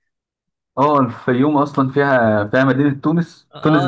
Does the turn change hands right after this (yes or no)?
yes